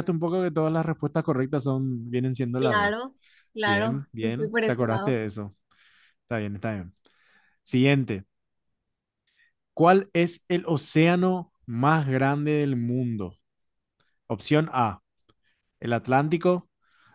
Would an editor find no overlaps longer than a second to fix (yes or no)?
no